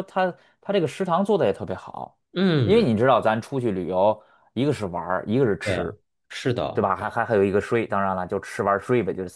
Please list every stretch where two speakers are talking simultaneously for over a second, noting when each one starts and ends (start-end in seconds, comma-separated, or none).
none